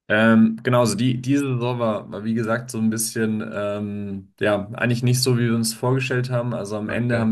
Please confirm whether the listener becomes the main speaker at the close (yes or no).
no